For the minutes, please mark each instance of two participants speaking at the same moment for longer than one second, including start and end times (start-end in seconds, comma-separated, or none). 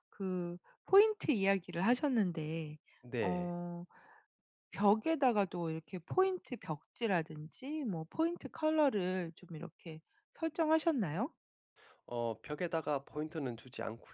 none